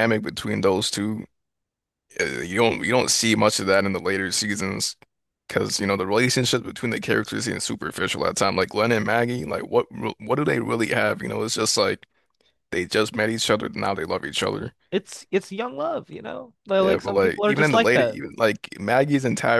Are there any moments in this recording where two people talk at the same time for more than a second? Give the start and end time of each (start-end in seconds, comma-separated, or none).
16.8-18.2